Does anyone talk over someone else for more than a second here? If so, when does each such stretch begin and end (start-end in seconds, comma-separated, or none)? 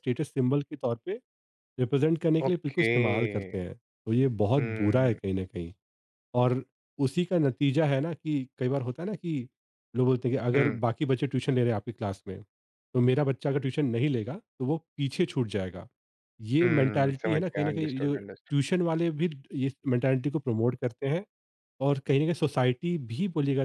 16.6-18.6